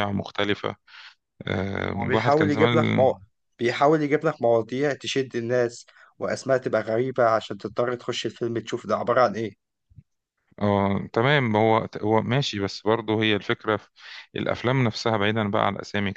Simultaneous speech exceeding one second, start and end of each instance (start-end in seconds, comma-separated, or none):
1.9-3.1